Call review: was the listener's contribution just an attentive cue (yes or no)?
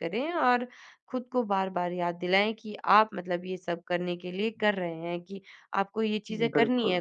yes